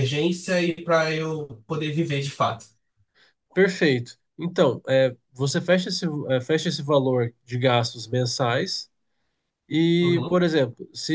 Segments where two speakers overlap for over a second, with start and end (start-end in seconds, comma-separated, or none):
none